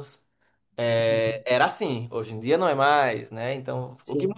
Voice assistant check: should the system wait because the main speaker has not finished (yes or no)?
yes